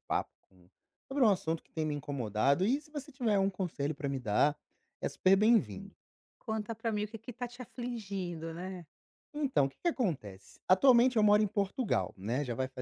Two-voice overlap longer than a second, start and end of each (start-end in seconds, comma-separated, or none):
none